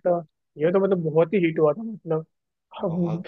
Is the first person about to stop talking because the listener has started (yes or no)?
no